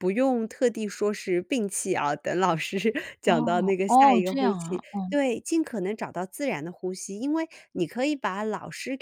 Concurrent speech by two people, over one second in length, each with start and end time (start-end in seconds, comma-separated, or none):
3.2-5.1